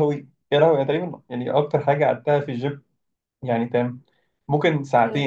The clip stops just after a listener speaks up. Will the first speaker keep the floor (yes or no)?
yes